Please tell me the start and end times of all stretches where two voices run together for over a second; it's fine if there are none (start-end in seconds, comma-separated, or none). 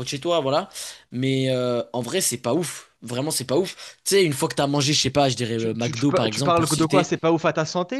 5.5-7.1